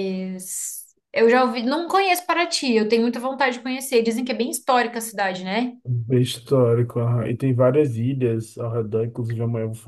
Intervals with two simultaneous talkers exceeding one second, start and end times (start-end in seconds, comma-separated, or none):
none